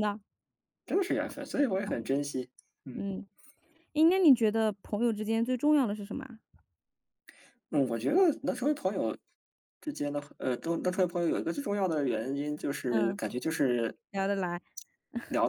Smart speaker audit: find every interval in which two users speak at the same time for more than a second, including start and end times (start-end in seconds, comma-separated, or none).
none